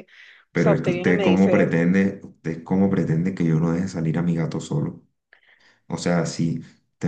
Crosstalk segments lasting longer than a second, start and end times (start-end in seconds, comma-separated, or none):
0.5-1.8